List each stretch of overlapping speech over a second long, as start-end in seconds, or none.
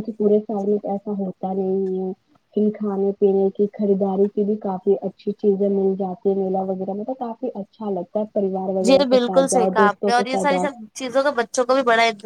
8.9-10.7